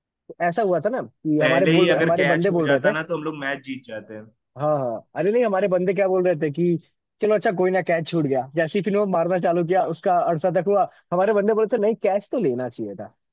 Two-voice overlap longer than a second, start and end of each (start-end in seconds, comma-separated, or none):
1.4-2.9